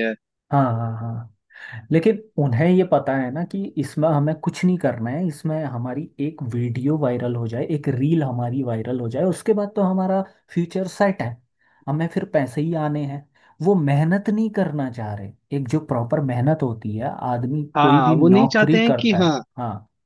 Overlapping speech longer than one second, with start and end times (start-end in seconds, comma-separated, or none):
17.8-19.4